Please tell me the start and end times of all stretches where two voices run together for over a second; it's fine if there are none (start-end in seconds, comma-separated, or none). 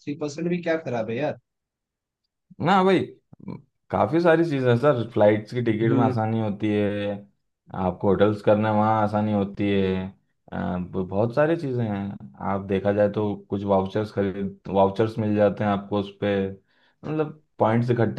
none